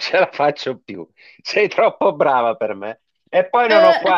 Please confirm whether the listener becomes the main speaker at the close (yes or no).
no